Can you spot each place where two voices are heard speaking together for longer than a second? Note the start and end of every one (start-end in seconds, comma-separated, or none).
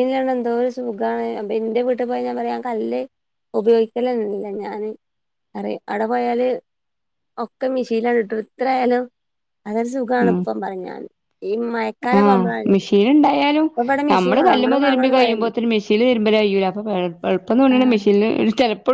14.1-15.5